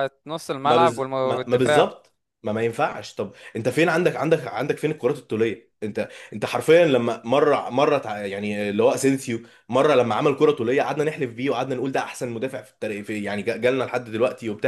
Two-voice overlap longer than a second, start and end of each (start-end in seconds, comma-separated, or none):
0.7-1.9